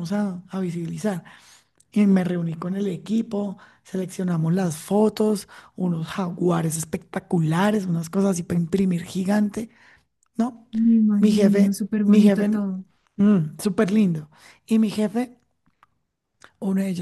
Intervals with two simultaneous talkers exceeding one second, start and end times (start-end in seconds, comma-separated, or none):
11.2-12.6